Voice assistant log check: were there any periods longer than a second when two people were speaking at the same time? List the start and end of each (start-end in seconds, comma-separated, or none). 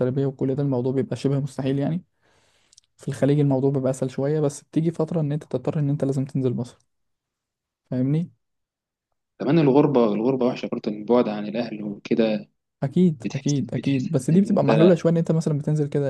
13.2-14.9